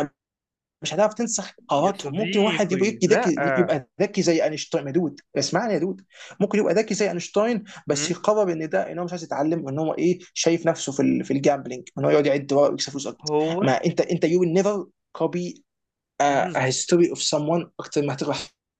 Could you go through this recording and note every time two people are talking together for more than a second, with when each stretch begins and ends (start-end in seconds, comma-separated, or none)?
1.8-3.2